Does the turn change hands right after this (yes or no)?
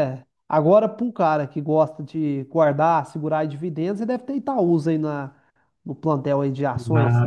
yes